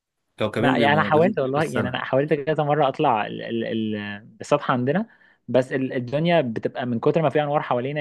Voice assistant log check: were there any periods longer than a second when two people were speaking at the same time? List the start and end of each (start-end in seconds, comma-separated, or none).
0.6-2.0